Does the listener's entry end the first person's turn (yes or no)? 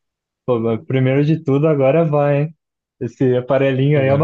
no